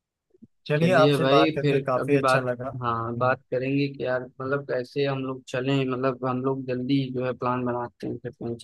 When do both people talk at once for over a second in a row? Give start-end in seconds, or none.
0.8-2.5